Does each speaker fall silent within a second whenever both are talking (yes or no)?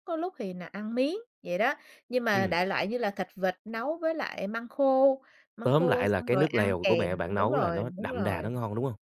no